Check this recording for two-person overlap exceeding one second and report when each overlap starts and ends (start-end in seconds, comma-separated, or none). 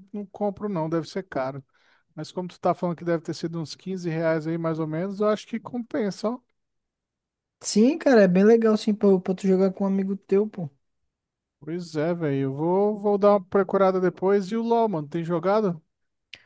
none